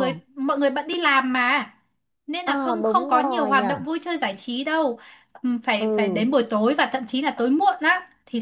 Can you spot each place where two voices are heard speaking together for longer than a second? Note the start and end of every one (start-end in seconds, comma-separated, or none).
2.4-3.6